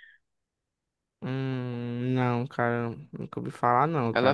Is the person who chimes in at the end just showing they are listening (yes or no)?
no